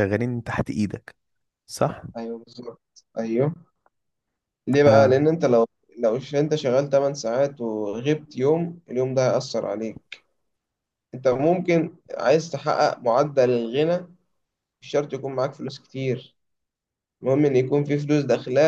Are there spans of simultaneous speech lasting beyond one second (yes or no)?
no